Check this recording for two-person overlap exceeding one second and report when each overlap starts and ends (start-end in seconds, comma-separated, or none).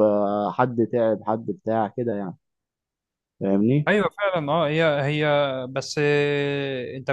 none